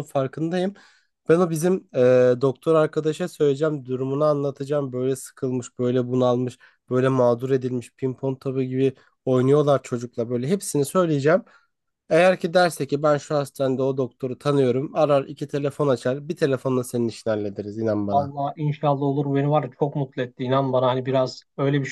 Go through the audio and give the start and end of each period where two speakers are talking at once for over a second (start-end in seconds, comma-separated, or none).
none